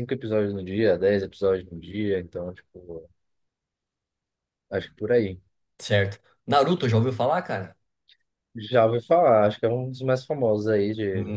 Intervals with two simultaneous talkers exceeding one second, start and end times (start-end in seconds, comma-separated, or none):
none